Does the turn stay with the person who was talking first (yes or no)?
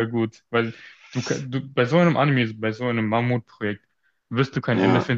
yes